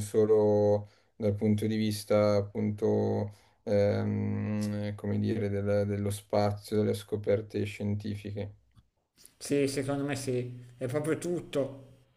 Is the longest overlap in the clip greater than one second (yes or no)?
no